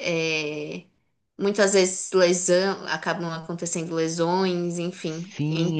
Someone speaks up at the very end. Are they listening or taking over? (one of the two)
taking over